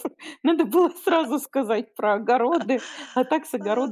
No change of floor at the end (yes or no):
yes